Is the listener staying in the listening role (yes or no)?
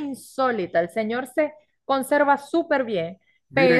no